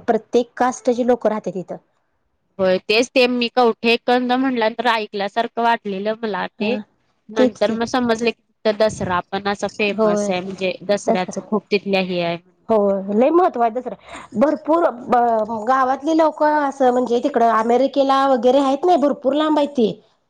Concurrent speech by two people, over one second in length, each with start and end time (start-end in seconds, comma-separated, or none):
none